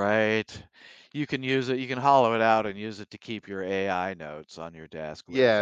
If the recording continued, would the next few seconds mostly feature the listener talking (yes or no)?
yes